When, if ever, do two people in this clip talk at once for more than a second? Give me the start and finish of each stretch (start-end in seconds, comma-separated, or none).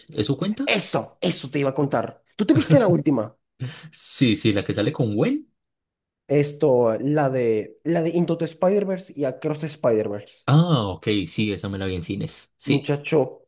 none